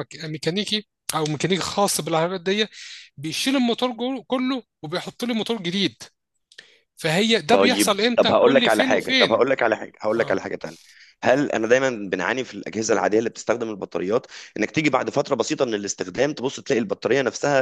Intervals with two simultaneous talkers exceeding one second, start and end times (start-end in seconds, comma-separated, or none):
7.5-9.4